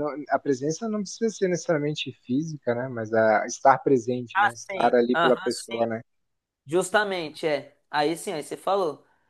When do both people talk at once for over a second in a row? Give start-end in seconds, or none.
4.3-5.9